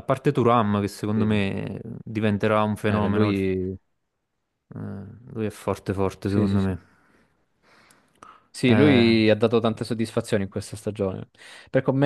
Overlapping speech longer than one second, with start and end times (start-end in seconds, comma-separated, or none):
none